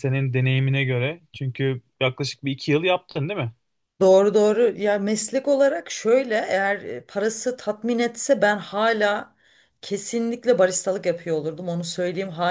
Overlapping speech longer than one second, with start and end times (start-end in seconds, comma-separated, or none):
none